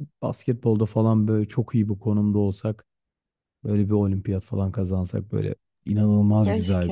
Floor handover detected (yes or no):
yes